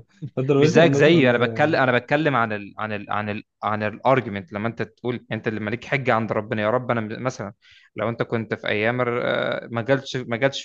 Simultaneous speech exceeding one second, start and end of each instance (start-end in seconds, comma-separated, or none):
0.6-1.8